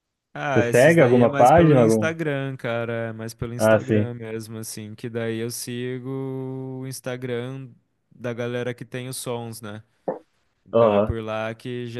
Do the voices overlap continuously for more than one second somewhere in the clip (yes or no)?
yes